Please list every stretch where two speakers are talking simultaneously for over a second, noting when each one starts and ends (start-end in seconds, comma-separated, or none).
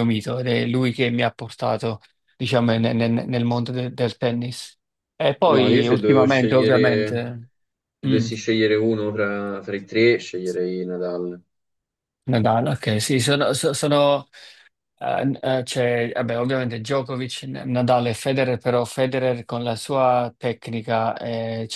5.5-7.3